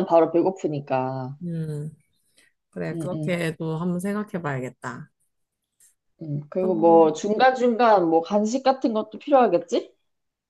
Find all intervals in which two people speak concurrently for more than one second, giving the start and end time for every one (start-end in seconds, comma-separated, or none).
none